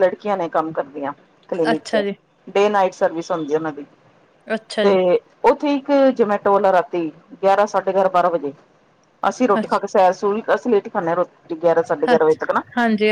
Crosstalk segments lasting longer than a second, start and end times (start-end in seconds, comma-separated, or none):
none